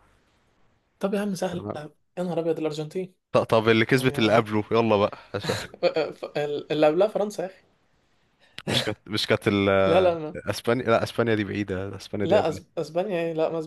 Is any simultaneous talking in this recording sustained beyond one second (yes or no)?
no